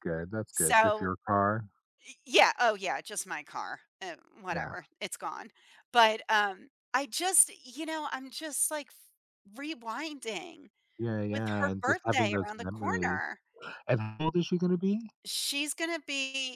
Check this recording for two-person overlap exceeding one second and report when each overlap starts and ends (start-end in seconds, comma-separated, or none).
11.3-13.2